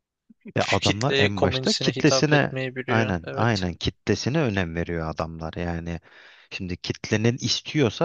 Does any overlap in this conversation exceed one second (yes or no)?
yes